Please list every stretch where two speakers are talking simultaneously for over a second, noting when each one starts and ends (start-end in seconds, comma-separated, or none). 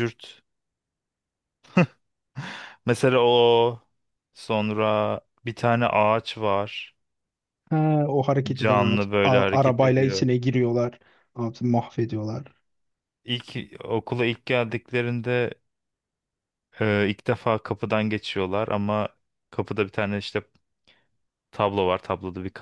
8.5-10.3